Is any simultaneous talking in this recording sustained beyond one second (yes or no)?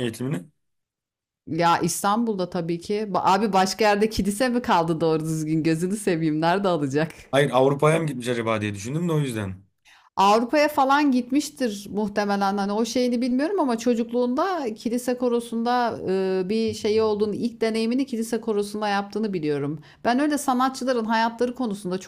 no